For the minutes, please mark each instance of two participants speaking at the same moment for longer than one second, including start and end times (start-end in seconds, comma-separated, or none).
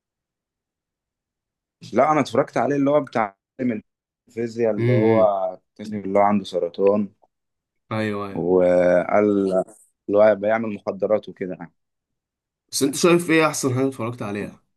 none